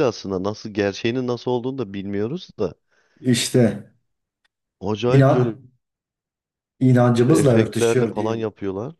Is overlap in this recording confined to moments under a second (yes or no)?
no